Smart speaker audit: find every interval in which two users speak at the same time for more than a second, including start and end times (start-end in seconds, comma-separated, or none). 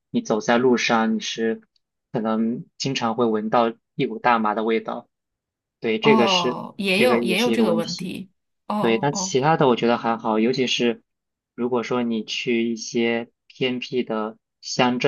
6.0-8.1